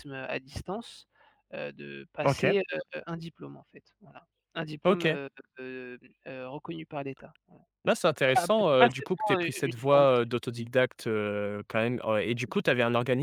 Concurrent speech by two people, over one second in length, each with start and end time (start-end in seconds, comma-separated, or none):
8.3-10.3